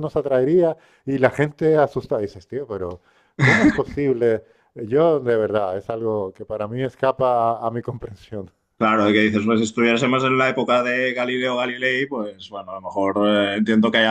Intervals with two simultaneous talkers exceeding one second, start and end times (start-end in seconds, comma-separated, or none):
none